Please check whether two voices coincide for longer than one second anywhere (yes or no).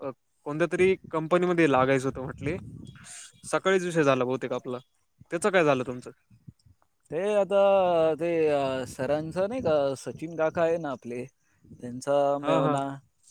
no